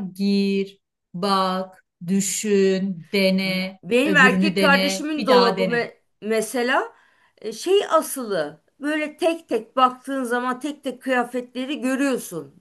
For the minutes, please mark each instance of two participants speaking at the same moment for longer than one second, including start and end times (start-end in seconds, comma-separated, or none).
3.8-5.9